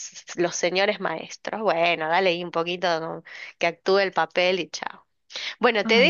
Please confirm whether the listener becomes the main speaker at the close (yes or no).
no